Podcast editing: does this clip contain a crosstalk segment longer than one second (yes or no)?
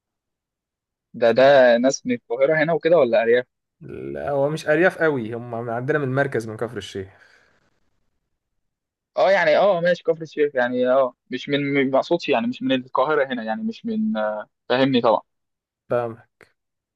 no